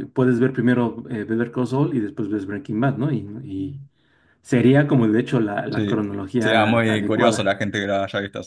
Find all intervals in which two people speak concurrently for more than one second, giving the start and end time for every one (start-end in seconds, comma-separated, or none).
5.7-7.5